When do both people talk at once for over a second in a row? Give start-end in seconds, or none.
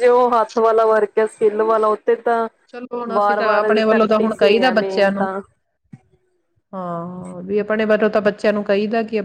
3.1-5.3